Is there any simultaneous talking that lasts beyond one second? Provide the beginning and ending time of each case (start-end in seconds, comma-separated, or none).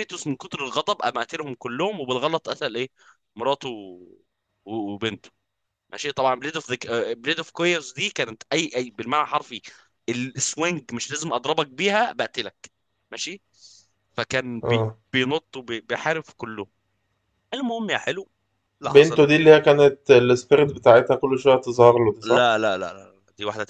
none